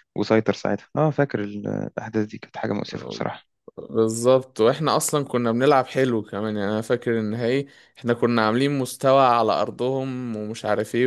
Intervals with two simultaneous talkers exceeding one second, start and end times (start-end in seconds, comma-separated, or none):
none